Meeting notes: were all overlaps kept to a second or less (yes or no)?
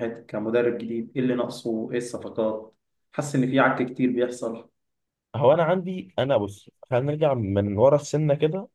yes